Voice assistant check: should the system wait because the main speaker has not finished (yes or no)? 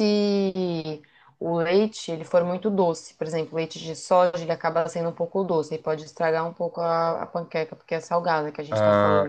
no